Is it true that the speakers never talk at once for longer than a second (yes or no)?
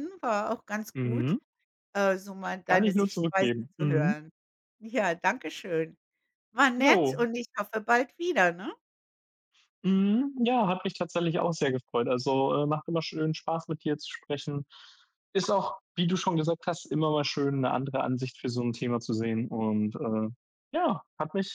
no